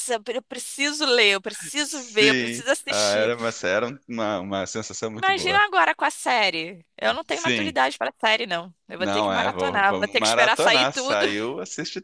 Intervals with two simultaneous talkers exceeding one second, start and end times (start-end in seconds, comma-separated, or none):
1.8-3.3, 9.0-11.2